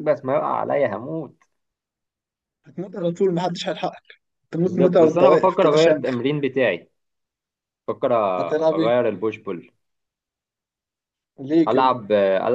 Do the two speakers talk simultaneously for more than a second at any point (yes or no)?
yes